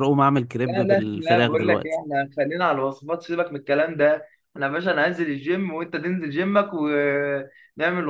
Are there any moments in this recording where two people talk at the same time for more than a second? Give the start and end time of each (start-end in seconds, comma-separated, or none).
0.7-2.0